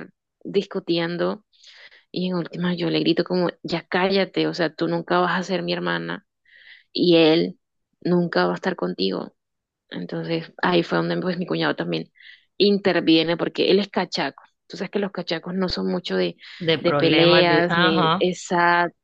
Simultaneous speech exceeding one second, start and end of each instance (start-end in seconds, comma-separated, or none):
16.8-18.2